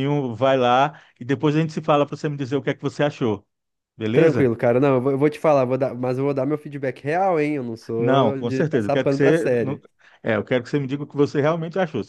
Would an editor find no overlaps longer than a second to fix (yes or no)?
no